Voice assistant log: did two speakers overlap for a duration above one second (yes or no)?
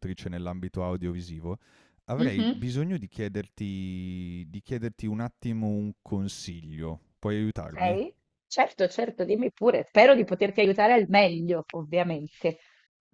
no